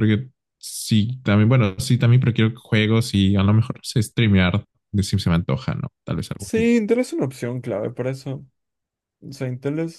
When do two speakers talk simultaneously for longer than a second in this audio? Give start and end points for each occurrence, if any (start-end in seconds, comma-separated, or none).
none